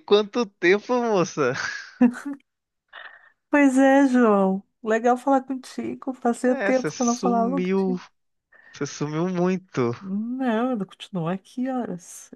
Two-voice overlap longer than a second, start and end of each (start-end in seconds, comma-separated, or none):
6.5-8.0